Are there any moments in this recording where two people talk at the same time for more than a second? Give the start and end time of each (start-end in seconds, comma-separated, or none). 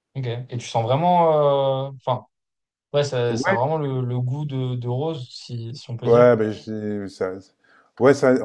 none